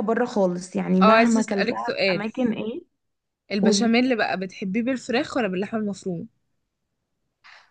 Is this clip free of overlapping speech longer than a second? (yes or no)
no